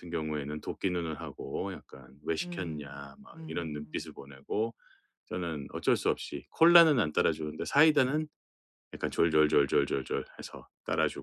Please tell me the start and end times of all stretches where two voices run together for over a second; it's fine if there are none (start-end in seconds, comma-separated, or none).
2.4-4.1